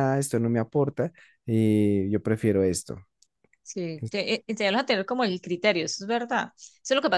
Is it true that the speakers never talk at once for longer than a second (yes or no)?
yes